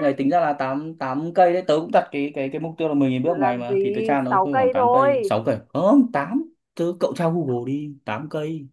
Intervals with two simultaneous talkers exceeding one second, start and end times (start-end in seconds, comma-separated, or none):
3.2-5.3